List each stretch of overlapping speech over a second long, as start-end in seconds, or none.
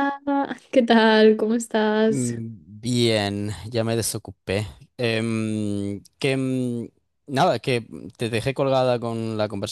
none